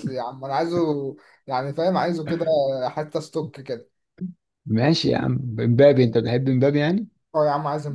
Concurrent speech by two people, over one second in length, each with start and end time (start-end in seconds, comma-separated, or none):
none